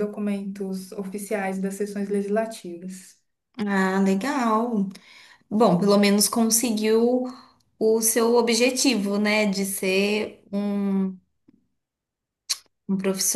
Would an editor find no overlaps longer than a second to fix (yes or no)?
yes